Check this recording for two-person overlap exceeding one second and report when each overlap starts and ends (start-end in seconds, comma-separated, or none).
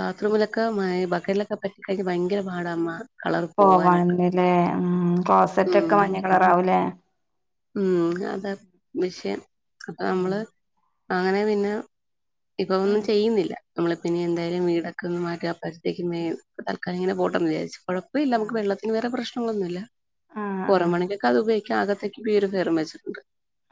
none